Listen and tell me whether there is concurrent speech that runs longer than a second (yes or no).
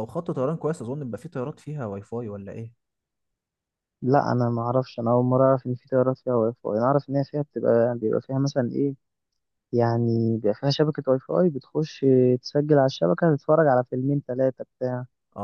no